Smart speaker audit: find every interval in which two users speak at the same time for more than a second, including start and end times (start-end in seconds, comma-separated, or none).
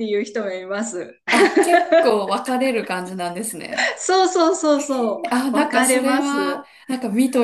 5.3-6.7